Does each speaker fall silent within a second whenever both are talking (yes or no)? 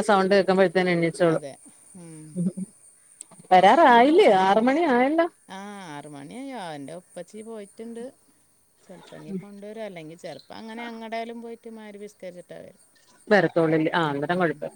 yes